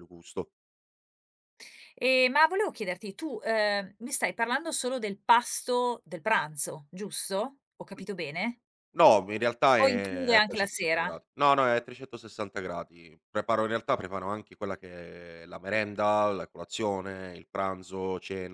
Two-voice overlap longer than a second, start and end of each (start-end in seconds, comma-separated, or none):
9.8-11.1